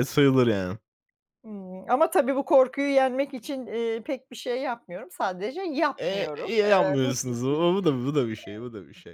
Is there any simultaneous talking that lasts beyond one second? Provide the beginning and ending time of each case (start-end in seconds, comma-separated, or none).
6.0-7.7